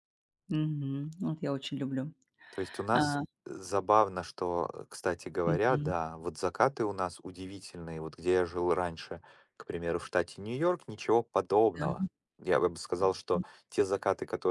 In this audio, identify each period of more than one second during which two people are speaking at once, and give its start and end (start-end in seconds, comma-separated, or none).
none